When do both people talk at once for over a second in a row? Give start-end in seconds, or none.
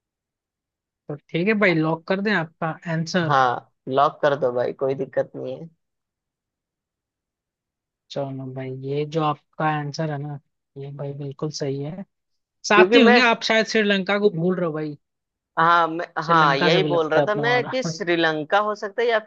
16.2-17.8